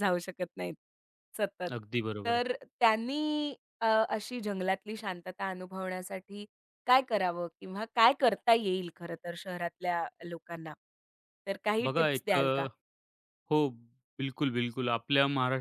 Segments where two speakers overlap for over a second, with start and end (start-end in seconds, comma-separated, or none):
none